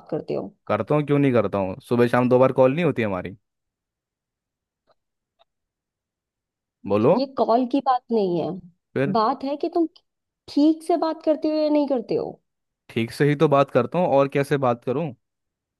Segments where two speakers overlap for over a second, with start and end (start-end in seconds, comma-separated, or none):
none